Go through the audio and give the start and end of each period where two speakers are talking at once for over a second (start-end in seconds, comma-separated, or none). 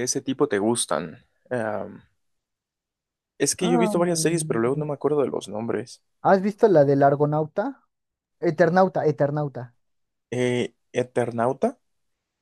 3.6-4.9